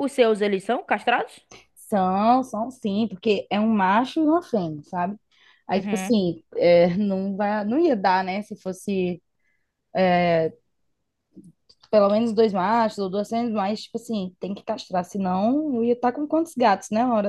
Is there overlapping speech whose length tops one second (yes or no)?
no